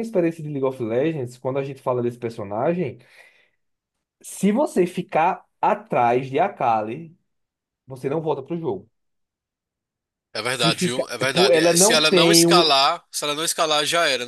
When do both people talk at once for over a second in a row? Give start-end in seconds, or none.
10.4-12.7